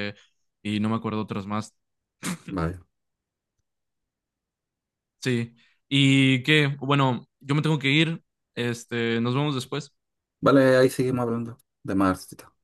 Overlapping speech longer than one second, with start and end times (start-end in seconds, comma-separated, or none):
none